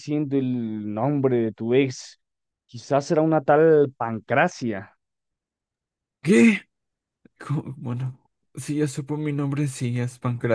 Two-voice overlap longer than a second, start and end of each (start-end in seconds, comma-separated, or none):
none